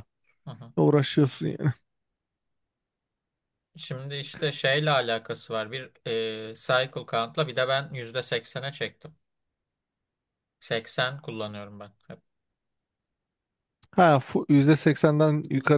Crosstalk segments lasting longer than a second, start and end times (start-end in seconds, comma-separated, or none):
none